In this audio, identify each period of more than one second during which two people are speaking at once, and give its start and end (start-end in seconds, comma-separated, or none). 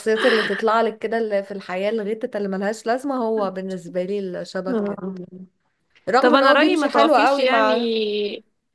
6.2-7.7